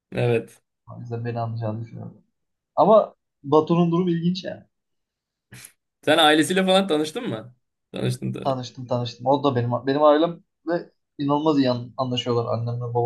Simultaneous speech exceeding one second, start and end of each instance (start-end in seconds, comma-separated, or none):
none